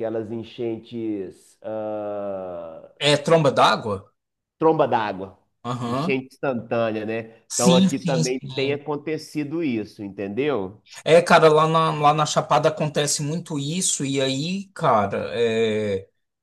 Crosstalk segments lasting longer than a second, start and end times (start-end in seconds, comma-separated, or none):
7.5-8.8